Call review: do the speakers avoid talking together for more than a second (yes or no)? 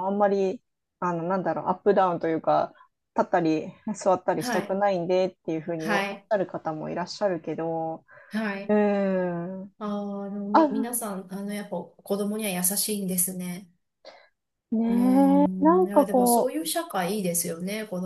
no